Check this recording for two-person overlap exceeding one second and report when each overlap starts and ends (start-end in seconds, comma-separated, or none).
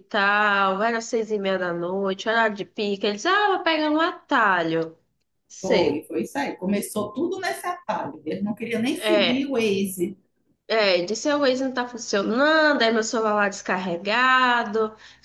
none